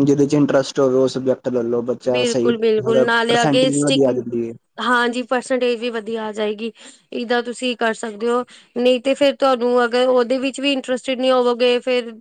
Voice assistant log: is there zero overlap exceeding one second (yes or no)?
no